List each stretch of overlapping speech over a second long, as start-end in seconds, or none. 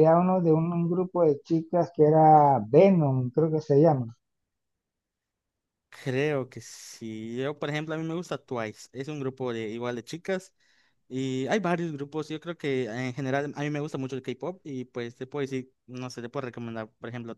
none